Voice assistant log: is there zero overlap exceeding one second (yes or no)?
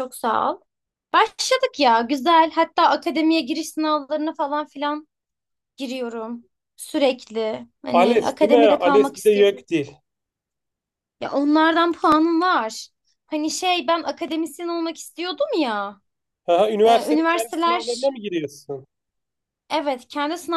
no